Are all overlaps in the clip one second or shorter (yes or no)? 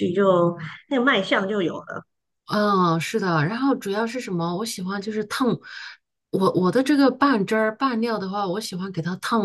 yes